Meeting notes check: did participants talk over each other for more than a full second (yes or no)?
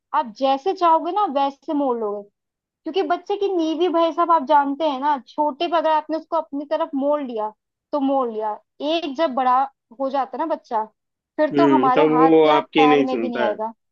yes